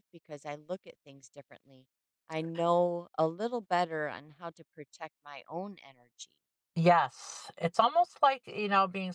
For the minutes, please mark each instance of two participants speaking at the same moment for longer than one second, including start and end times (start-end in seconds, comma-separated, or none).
none